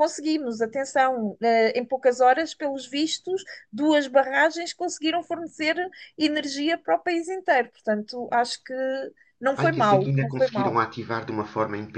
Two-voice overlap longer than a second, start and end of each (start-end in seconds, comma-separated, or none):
9.6-10.8